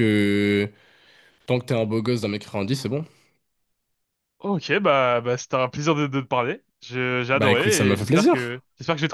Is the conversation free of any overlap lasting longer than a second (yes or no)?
no